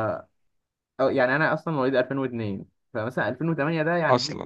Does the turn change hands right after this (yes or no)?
no